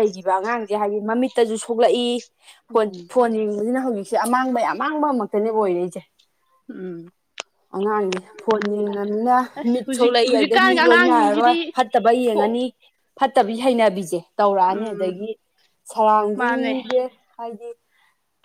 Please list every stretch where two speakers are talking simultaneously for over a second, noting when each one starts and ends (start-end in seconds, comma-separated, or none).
9.6-11.6